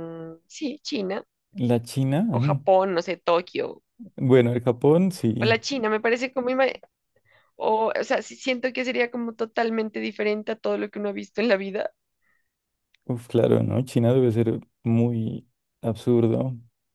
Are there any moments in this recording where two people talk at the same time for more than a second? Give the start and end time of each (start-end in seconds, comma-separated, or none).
none